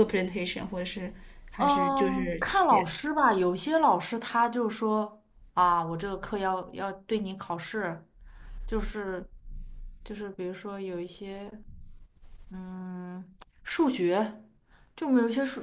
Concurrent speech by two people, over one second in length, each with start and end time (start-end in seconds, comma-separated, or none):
1.6-2.9